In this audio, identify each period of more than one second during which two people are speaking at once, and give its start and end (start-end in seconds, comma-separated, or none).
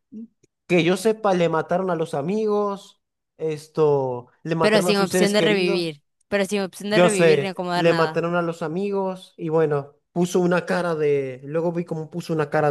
4.6-5.8, 6.9-8.2